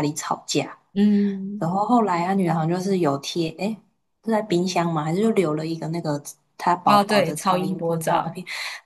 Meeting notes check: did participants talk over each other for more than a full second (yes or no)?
yes